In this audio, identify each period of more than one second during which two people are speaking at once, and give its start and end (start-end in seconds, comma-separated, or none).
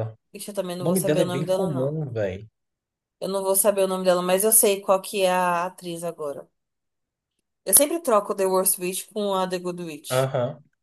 0.8-2.0